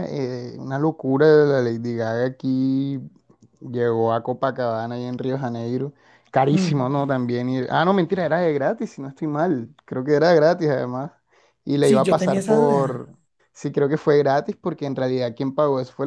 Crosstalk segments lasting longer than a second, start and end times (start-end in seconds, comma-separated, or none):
11.8-13.1